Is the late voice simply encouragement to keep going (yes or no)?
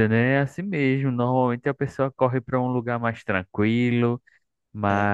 yes